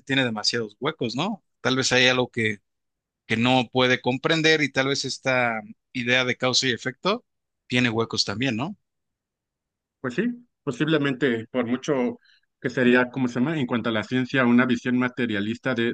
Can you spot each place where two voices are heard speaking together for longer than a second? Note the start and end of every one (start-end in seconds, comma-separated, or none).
none